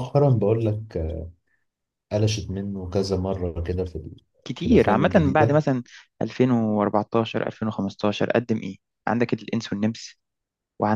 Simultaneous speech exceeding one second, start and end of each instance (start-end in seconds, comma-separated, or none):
4.4-5.6